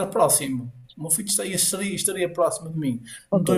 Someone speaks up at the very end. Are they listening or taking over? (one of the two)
listening